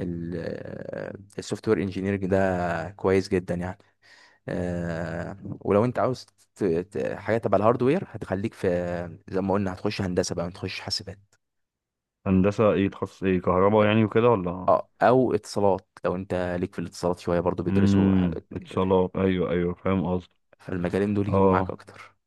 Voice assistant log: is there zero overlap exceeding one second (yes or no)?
no